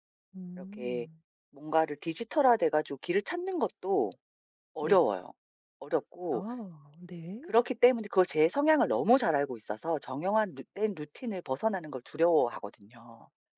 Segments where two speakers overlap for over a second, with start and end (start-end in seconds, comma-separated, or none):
none